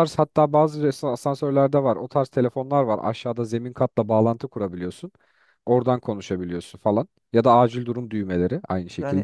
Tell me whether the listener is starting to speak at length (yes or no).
yes